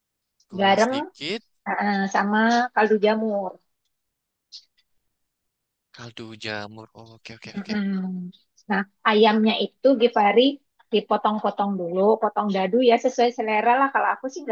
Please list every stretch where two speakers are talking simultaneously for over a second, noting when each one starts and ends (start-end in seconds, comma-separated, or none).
none